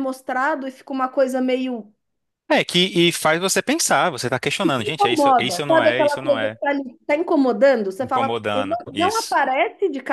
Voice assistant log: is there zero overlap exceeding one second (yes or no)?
no